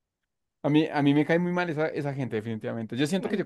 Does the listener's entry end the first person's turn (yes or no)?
no